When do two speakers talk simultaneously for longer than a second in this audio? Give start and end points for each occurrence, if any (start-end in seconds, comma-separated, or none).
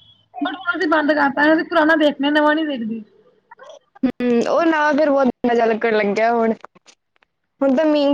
none